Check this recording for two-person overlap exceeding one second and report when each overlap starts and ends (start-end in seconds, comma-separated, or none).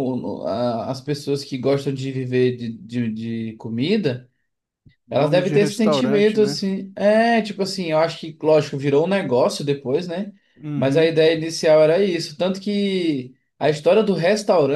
5.1-6.6